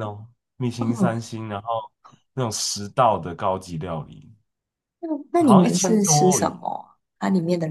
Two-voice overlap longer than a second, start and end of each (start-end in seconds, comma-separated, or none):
5.3-6.6